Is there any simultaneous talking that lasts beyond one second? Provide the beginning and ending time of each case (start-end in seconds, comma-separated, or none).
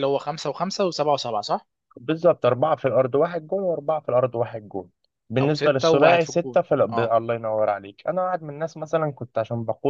5.4-7.2